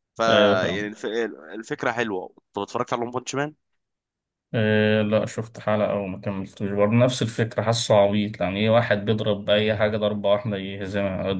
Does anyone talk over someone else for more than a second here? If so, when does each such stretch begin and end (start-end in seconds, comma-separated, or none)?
none